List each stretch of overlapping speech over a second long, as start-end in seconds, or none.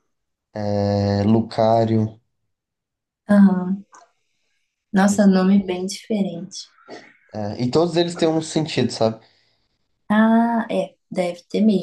none